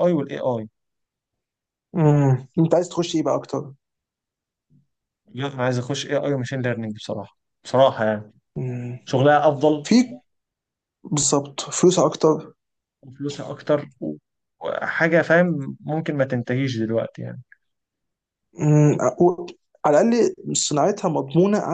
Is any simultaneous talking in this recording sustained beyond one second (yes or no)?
no